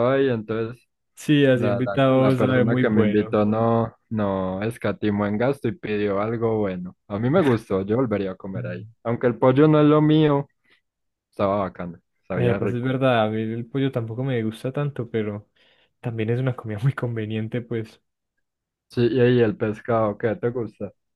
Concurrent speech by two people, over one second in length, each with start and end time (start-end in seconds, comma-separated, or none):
1.5-3.4